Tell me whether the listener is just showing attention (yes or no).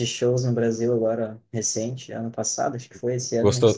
no